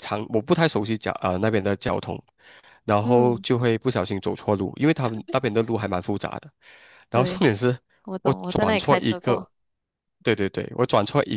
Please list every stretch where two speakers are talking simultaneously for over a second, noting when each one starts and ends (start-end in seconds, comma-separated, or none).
8.2-9.5